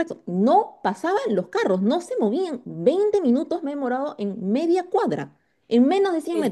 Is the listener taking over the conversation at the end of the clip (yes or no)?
no